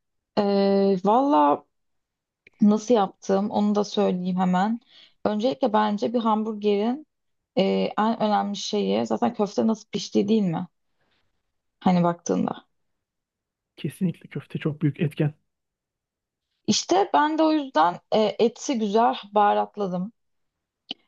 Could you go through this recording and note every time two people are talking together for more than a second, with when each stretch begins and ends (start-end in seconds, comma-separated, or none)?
none